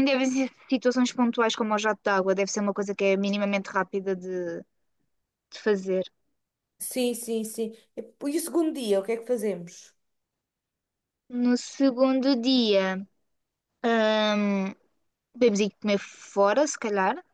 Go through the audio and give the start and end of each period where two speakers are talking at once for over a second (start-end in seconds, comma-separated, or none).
none